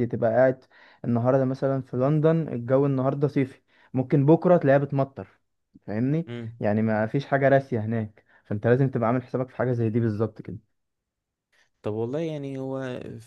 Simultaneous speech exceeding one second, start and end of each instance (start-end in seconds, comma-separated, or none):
none